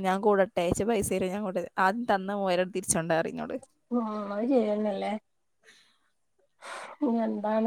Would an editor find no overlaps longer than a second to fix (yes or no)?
yes